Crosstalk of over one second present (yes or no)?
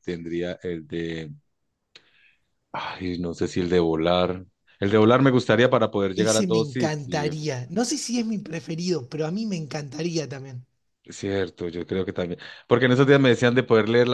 yes